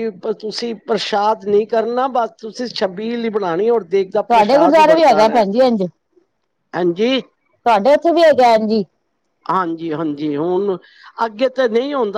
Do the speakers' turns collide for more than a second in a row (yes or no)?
yes